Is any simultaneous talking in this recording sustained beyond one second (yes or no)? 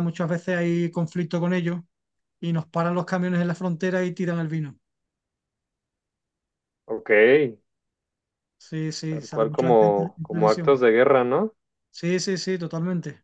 yes